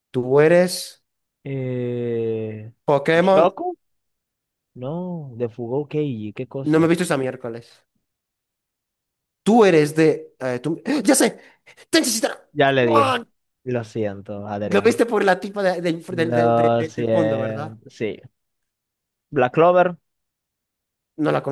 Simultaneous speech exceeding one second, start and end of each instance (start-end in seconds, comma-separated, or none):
16.1-17.7